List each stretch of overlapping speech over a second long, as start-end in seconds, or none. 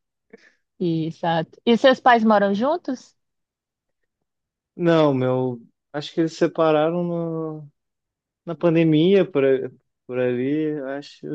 none